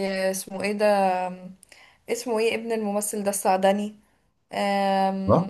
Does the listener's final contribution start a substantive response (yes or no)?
no